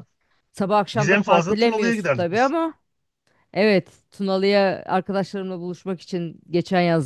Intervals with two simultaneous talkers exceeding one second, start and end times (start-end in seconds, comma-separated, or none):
0.9-2.5